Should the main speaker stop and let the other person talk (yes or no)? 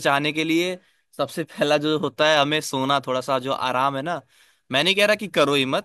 no